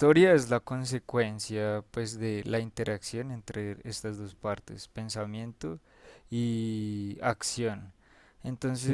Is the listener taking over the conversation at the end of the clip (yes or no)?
no